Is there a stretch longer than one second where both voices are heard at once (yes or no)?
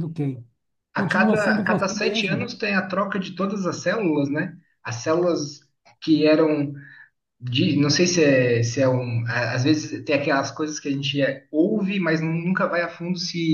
yes